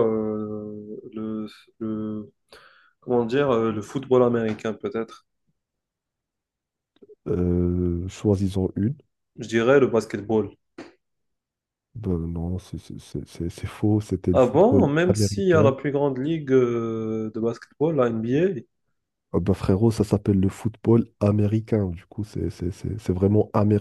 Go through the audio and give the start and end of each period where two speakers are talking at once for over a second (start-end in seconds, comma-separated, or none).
14.3-15.7